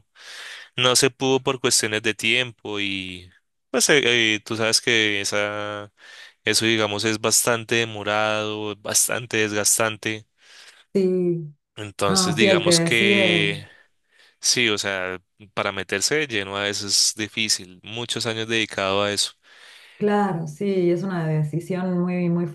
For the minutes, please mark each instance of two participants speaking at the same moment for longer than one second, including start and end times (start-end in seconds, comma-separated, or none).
12.1-13.5